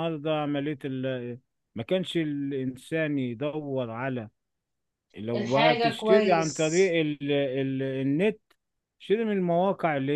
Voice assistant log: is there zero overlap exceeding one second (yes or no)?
no